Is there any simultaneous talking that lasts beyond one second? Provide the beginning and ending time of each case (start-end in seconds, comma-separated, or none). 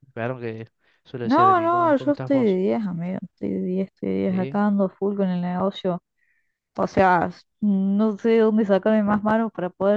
1.2-2.6